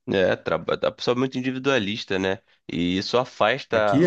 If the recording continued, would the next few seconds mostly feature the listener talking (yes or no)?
no